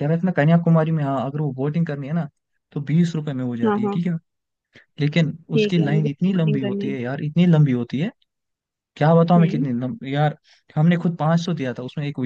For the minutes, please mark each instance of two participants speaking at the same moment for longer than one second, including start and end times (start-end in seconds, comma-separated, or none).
5.5-7.0